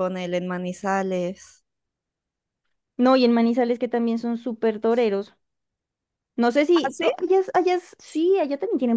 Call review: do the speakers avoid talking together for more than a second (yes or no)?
yes